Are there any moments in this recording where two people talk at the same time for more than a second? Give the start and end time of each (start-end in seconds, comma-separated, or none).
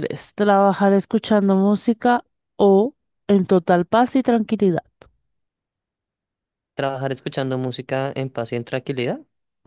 none